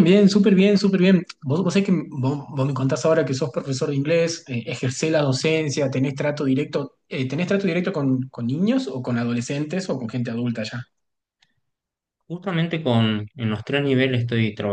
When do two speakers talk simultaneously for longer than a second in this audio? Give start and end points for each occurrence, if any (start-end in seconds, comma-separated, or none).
none